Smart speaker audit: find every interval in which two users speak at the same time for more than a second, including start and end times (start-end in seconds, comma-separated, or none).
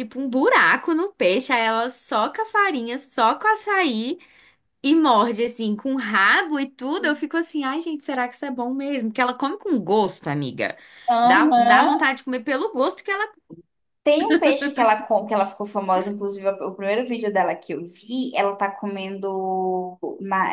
none